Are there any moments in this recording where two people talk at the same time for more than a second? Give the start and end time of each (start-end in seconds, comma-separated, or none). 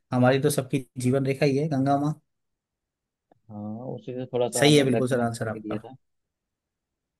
4.6-5.8